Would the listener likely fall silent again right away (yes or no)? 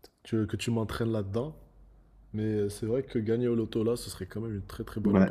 no